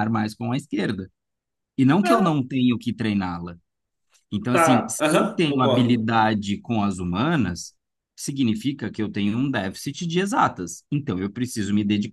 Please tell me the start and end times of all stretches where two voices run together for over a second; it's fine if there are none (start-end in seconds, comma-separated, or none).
4.5-6.1